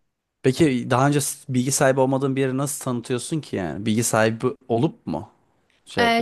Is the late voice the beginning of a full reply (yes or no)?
yes